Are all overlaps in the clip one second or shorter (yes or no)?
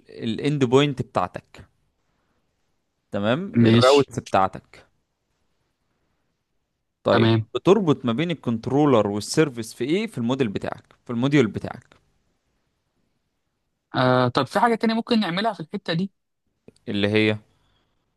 yes